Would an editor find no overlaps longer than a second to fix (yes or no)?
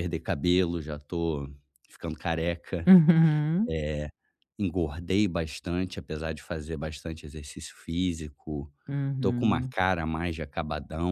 yes